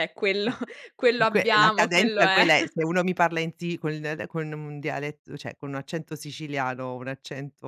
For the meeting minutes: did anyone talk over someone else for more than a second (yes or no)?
yes